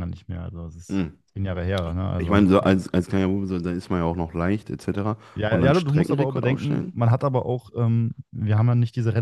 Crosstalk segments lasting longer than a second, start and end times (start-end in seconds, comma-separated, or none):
5.3-6.9